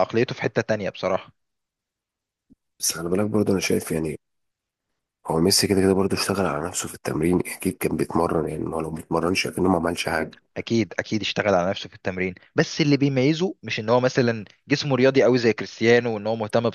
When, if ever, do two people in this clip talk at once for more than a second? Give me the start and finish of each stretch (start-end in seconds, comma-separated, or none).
none